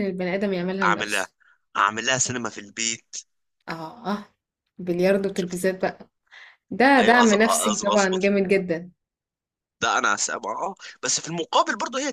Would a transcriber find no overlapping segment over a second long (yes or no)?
no